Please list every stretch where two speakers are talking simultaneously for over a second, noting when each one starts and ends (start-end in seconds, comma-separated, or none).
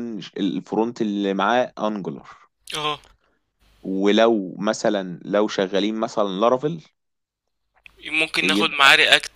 none